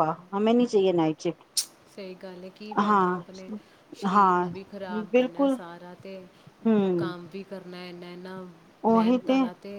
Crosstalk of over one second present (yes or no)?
no